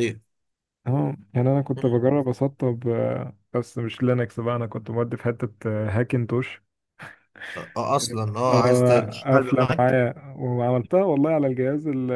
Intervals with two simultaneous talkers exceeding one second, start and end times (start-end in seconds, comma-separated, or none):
8.5-10.0